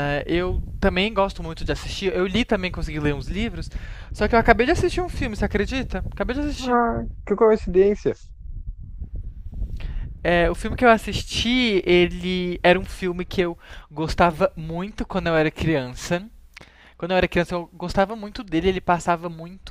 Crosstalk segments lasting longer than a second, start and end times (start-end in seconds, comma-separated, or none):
none